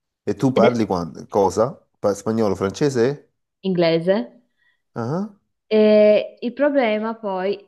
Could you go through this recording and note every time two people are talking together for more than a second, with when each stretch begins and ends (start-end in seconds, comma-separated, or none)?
none